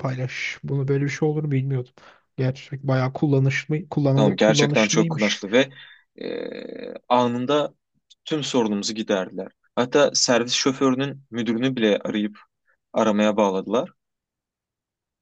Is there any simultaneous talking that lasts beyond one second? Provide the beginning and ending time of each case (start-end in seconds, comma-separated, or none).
4.2-5.4